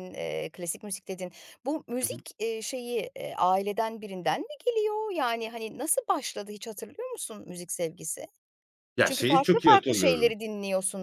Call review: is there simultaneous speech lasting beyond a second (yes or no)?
yes